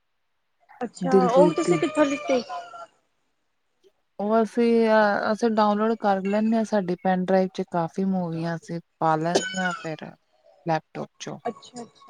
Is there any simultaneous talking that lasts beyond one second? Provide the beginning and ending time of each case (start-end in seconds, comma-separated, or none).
none